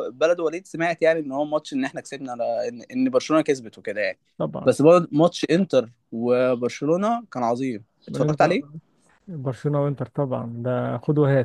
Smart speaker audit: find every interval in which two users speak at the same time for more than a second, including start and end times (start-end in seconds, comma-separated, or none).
none